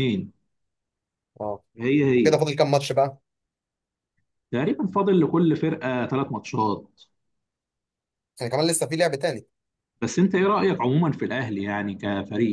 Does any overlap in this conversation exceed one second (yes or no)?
no